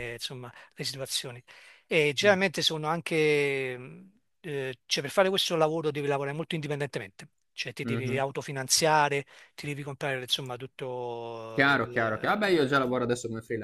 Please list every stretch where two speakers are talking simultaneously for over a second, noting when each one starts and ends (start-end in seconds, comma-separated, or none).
11.5-13.1